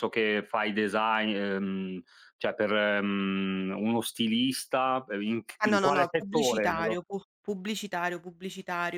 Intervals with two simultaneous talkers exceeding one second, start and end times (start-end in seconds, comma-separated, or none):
5.6-7.0